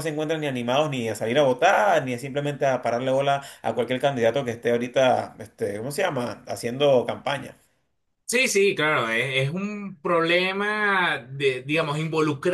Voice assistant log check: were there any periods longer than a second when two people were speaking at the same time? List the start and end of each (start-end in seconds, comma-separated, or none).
none